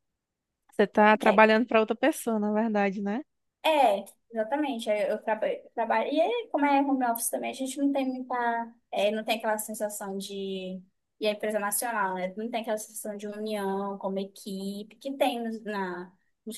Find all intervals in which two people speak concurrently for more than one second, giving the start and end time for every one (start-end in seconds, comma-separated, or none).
none